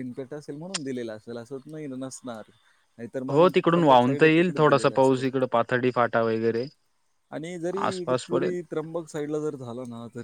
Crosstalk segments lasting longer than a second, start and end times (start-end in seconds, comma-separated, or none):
3.3-5.2